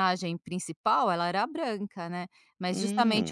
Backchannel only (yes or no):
yes